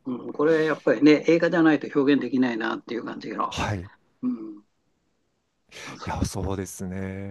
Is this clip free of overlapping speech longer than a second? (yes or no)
yes